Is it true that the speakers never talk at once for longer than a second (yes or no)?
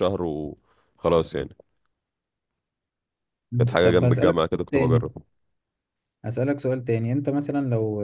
no